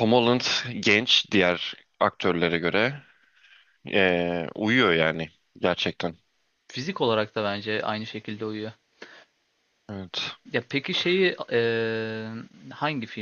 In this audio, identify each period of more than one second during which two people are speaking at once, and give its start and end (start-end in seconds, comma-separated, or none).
none